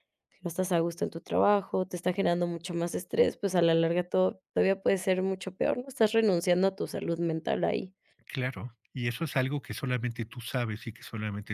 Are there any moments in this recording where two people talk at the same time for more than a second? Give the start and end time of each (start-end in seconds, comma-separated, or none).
none